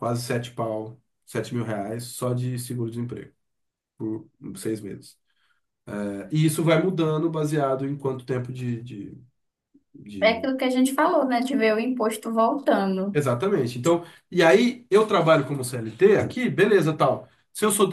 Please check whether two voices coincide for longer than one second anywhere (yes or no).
no